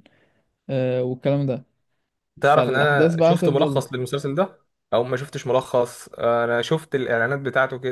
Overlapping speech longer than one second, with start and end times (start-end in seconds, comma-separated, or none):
2.4-3.8